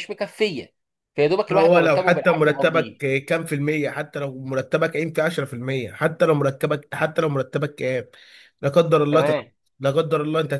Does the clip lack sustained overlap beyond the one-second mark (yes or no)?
no